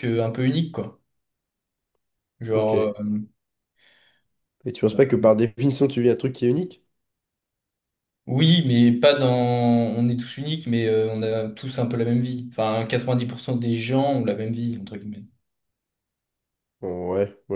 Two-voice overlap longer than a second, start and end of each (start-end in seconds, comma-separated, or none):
none